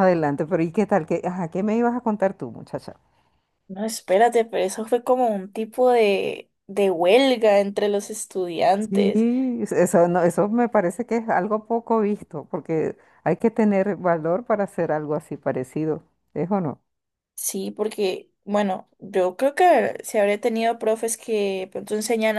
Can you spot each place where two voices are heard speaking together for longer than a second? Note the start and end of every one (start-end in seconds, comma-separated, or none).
none